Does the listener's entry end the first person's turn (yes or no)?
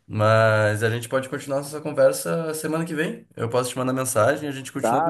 yes